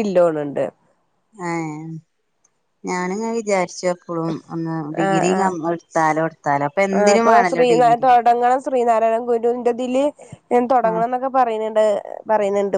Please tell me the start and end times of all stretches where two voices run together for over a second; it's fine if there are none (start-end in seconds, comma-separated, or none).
none